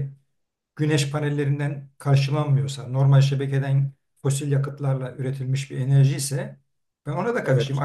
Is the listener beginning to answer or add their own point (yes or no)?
no